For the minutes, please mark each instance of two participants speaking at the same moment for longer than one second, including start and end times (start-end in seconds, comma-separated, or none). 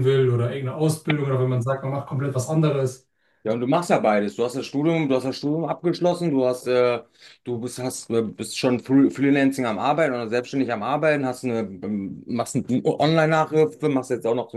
none